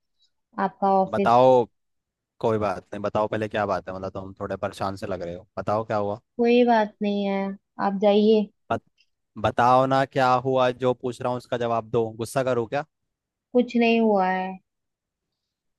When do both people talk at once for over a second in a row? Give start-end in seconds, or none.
none